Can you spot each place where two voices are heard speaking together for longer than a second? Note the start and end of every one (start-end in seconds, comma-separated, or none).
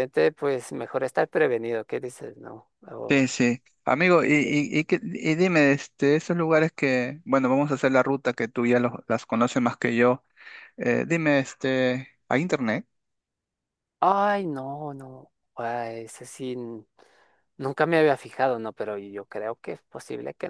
none